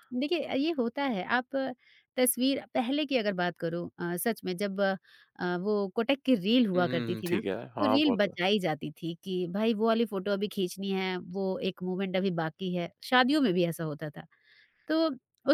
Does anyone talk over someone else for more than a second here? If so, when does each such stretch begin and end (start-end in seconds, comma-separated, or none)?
6.7-8.4